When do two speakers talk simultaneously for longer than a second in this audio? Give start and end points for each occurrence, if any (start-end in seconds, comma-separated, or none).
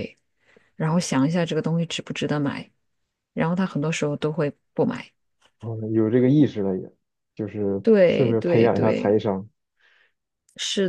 7.8-9.2